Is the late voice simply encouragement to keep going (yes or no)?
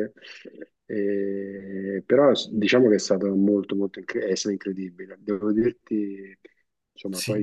yes